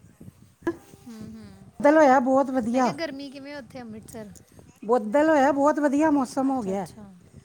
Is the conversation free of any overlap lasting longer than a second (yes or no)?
yes